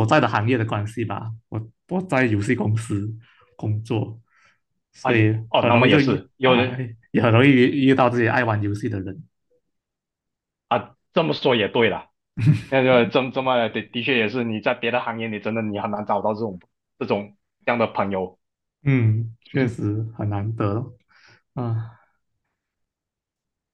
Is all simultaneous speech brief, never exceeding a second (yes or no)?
no